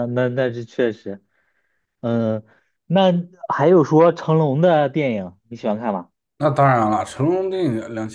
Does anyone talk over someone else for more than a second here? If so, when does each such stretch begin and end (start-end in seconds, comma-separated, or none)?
none